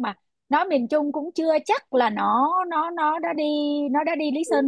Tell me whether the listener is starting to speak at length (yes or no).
yes